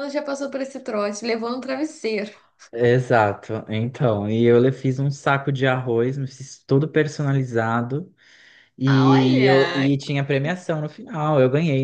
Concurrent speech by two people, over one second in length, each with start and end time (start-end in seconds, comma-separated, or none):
8.8-10.1